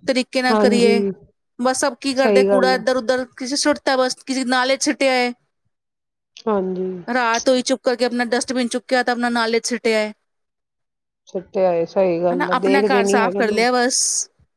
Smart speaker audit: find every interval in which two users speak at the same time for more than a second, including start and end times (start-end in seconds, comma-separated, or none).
12.3-13.7